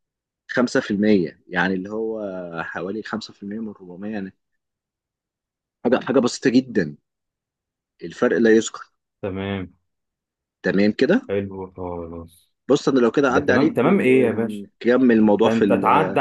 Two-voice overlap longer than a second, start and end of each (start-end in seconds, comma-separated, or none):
13.3-14.6